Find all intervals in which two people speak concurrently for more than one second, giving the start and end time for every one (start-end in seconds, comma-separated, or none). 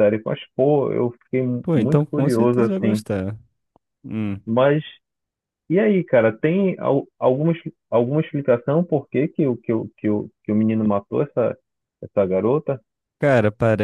1.6-3.0